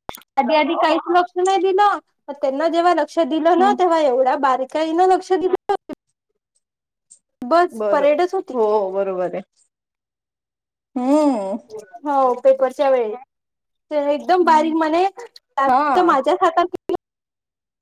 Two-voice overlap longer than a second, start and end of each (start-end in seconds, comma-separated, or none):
none